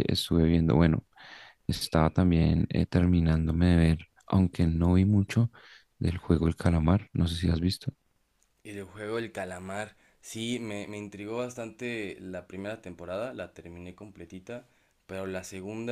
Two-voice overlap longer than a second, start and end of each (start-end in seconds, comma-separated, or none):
none